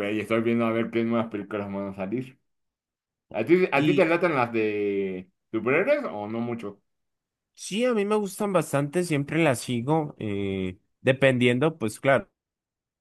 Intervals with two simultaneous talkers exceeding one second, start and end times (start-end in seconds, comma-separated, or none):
none